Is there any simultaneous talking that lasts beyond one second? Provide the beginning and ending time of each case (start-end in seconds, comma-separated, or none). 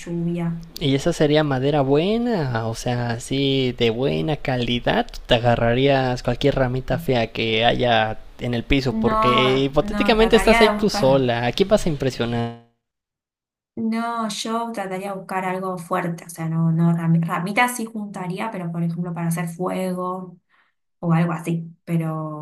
8.9-11.3